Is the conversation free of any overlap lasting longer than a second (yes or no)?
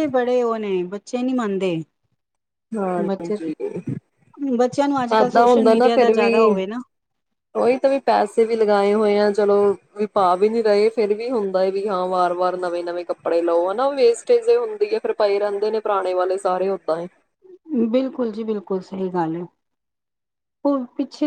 no